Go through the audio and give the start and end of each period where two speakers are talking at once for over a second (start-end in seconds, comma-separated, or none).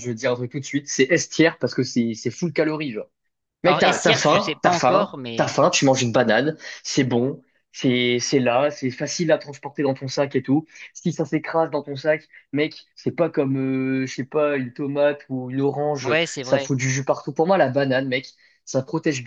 3.6-5.5